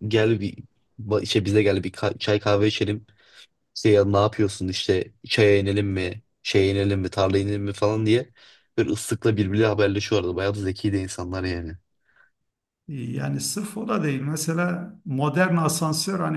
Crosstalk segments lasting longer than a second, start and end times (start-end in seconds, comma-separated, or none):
none